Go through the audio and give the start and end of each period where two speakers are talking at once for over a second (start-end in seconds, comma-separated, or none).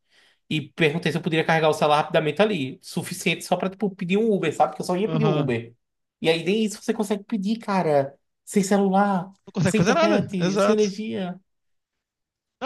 9.5-10.9